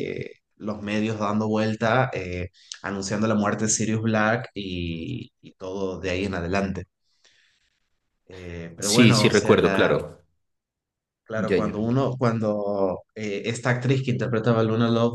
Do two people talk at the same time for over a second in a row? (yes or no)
yes